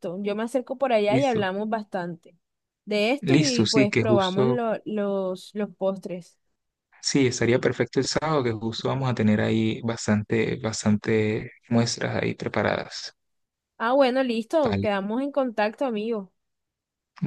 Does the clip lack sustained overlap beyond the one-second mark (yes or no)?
no